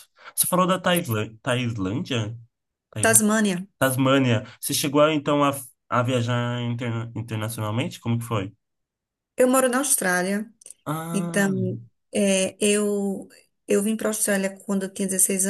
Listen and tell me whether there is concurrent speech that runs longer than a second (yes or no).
no